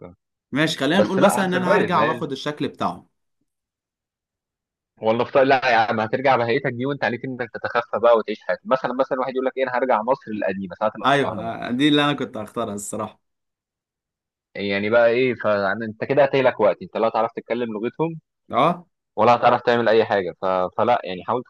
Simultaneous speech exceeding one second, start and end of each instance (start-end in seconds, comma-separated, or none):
0.9-2.2